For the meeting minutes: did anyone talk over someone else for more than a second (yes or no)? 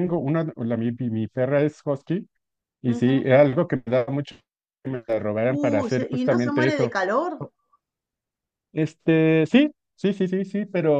yes